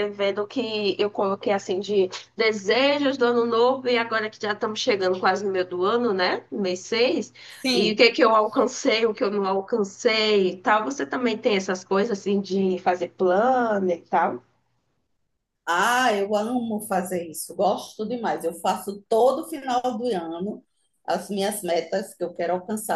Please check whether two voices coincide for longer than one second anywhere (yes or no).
no